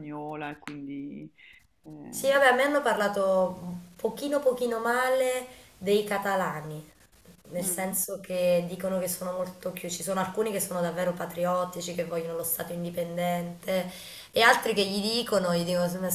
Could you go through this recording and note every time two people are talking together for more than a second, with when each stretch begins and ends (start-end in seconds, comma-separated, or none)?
none